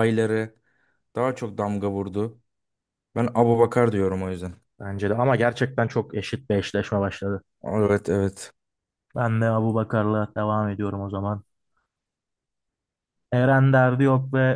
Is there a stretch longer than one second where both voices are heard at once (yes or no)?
no